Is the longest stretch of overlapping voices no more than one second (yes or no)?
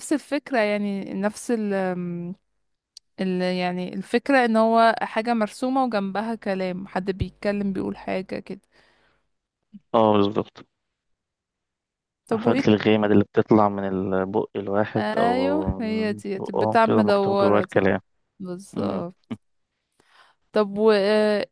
no